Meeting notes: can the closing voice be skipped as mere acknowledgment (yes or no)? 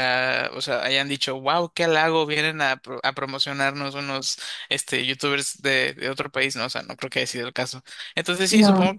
yes